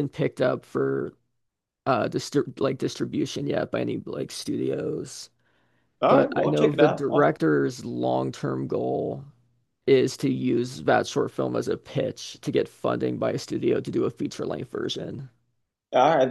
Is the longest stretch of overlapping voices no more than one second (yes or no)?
no